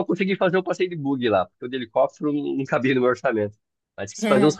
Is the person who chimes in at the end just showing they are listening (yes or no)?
yes